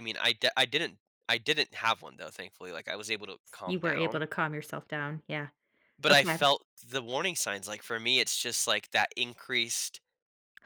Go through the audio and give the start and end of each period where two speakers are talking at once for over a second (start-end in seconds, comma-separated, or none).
none